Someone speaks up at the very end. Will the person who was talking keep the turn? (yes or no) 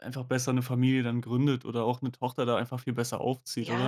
no